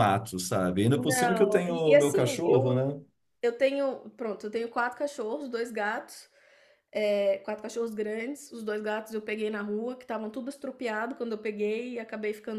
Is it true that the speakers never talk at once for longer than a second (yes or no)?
no